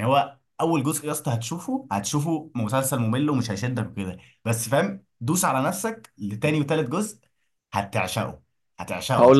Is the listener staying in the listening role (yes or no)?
no